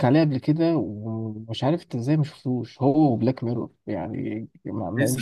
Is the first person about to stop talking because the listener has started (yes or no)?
no